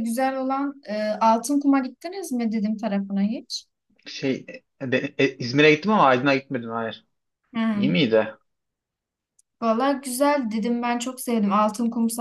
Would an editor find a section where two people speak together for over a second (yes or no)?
no